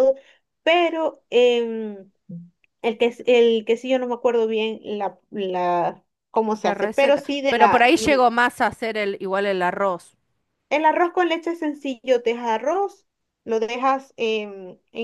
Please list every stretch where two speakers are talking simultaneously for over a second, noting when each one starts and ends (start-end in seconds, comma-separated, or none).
6.6-7.9